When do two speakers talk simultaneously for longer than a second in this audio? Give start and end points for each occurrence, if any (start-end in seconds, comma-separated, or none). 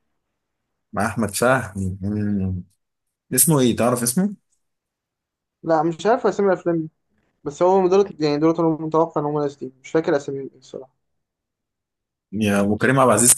none